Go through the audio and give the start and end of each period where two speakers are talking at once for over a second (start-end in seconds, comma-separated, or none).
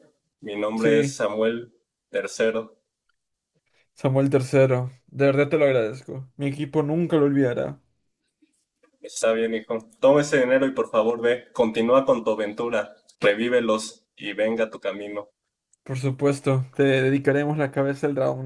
none